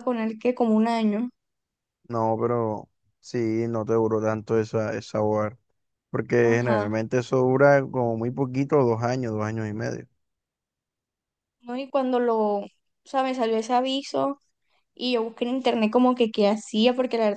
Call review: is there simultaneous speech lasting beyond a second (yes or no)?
no